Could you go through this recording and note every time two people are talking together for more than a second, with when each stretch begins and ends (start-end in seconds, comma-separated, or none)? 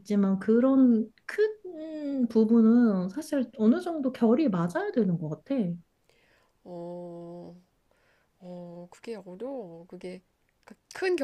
none